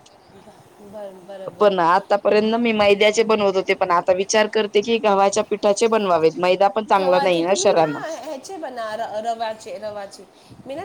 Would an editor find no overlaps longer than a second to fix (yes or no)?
yes